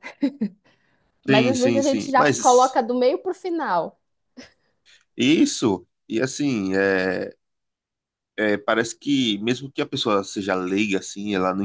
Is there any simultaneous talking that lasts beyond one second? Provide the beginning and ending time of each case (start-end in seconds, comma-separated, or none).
1.3-2.8